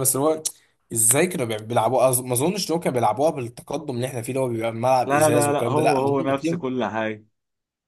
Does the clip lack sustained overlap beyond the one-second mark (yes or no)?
no